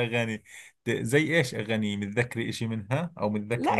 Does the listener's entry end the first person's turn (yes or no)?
yes